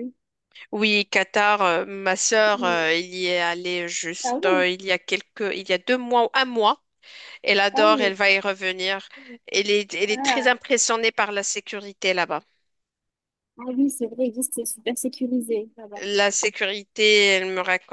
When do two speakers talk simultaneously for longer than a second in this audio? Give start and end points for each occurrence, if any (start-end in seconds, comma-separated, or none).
none